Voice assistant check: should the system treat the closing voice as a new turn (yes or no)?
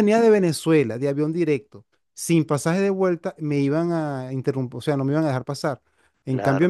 no